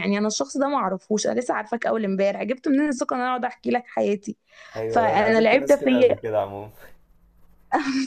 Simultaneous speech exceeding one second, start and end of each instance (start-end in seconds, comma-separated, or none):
4.9-6.3